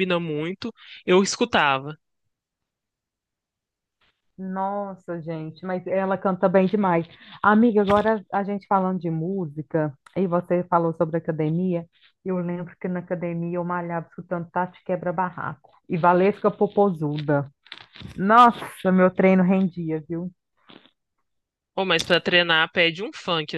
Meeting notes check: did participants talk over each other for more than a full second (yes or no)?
no